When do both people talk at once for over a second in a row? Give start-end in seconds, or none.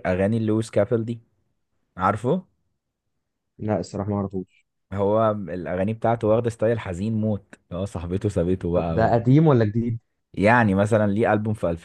none